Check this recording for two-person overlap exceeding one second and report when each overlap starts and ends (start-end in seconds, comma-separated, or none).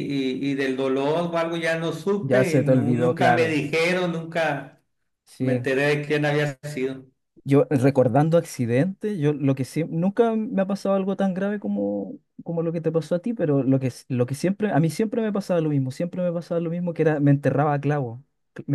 2.2-3.6